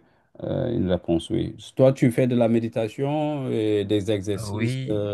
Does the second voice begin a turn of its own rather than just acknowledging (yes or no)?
yes